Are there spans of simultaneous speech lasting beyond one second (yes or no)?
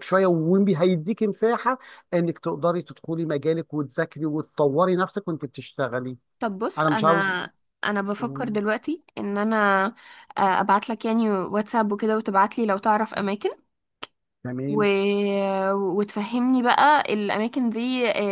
no